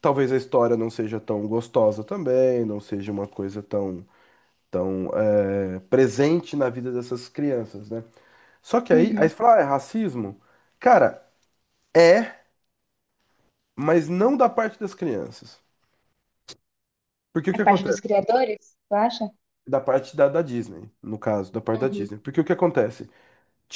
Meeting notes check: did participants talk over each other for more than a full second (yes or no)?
no